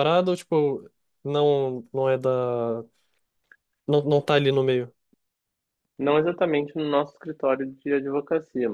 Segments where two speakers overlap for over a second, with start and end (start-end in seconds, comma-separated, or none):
none